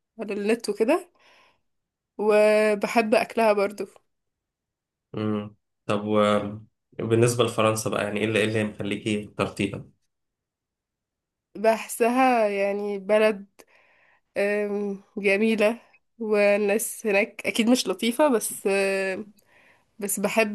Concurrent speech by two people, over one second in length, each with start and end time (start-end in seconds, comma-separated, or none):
none